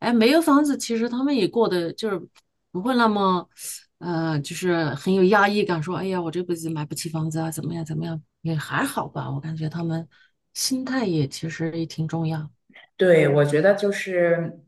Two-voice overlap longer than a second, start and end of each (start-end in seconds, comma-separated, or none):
none